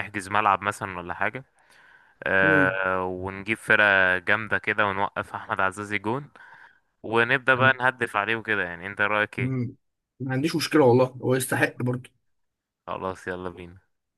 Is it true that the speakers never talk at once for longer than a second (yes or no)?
yes